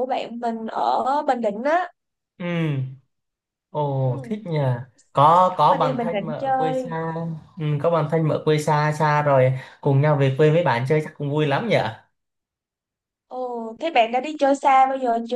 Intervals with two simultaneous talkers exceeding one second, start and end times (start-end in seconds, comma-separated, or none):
5.3-6.9